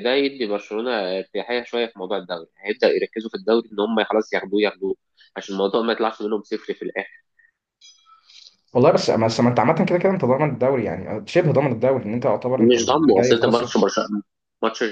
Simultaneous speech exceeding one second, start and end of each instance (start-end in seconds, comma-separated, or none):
12.6-13.8